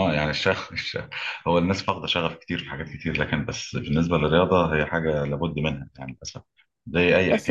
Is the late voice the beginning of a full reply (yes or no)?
yes